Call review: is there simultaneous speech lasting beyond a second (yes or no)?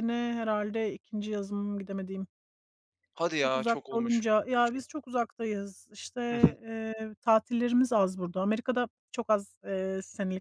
yes